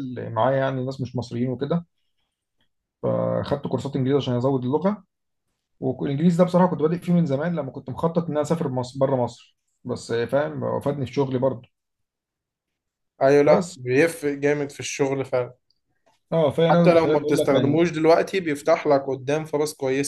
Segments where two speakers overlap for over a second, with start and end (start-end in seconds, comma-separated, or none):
16.6-17.9